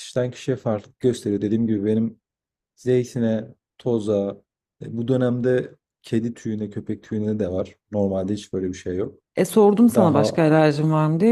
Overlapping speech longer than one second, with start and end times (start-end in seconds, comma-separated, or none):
none